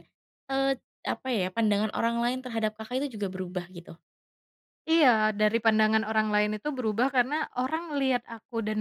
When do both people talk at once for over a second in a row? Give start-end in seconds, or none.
none